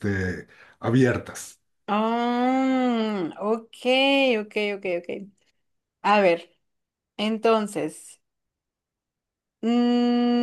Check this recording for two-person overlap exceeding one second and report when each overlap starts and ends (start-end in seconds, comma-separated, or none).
none